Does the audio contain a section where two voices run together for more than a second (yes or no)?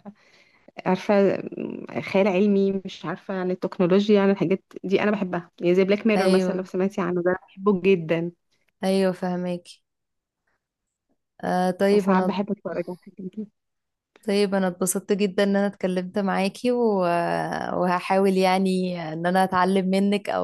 no